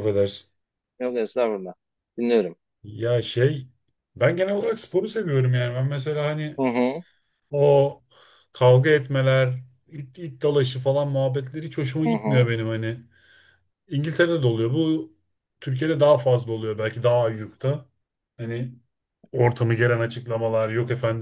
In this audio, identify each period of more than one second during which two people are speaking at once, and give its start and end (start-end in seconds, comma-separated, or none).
none